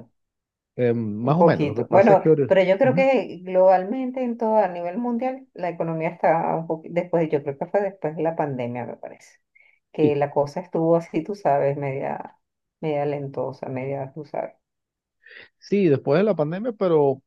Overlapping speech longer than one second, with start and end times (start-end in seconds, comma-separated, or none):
1.2-3.1